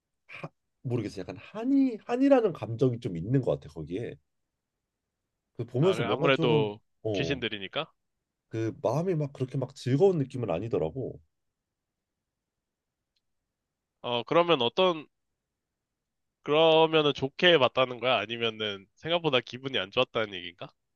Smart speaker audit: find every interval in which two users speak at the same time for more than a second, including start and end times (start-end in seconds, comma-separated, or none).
5.8-7.4